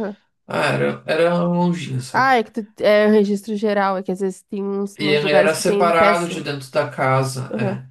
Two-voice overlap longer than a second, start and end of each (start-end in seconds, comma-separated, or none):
5.0-6.4